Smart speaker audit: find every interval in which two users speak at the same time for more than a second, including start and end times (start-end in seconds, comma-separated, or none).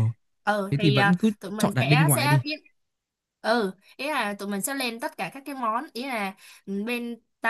0.7-2.4